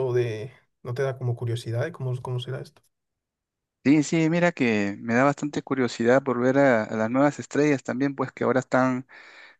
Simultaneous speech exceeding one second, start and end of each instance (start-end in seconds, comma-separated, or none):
none